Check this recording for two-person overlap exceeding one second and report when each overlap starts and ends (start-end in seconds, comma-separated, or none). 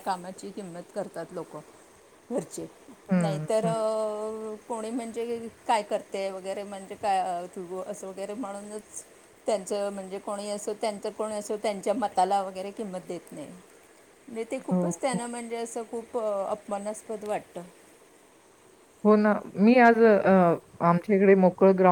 none